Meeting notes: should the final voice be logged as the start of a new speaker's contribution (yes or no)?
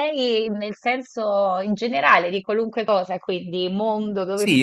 yes